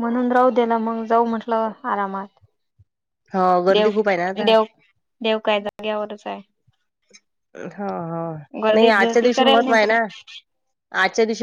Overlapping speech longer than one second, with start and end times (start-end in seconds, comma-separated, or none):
8.7-10.0